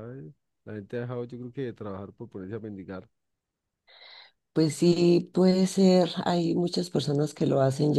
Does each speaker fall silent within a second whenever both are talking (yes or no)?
yes